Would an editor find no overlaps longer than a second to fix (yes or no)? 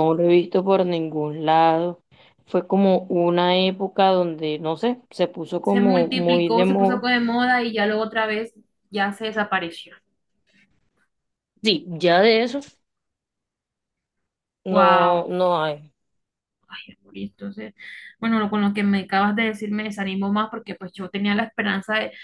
no